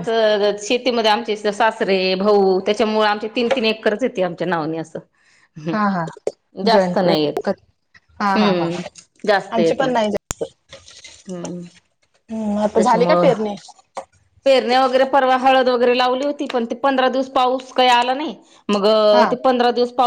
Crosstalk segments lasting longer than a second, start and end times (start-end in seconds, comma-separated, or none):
none